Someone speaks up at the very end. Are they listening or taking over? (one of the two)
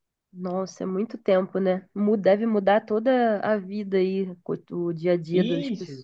taking over